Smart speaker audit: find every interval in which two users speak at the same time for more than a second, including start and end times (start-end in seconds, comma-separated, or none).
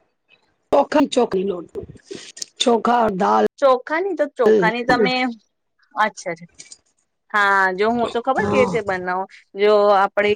none